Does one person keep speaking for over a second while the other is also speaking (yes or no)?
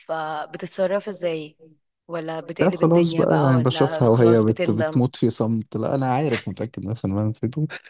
yes